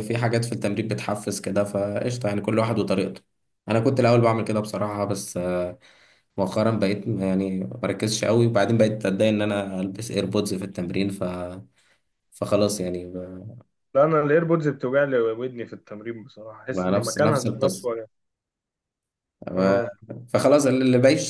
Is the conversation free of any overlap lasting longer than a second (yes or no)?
no